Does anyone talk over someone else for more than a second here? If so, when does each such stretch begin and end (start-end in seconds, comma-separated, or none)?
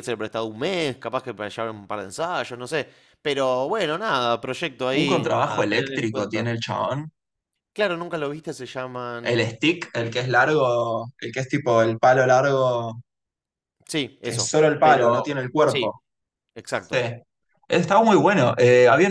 4.9-6.5, 14.2-15.9